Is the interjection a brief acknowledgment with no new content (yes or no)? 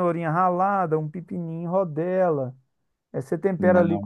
yes